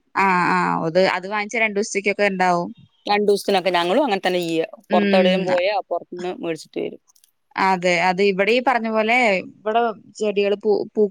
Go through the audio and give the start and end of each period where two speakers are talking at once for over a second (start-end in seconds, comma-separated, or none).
none